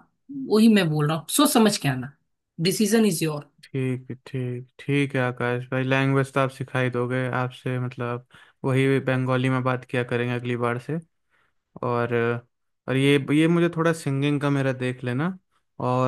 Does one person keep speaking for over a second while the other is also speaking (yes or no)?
no